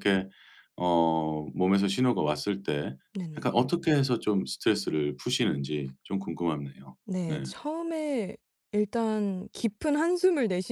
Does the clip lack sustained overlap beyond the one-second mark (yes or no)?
yes